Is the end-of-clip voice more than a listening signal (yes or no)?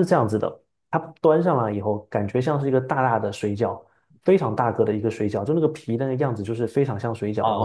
yes